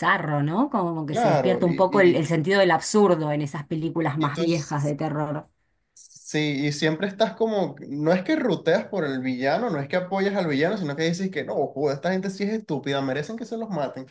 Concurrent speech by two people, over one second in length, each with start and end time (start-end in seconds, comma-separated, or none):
1.1-2.3